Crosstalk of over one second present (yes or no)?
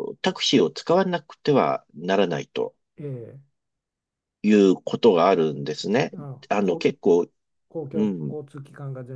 no